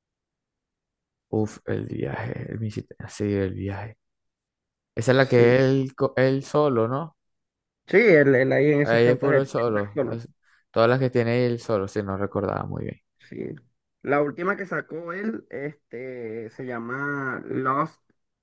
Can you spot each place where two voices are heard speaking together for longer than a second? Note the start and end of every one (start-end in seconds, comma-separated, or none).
8.8-10.2